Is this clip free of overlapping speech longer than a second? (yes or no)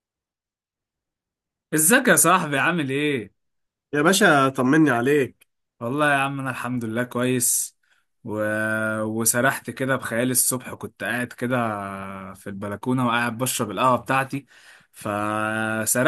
yes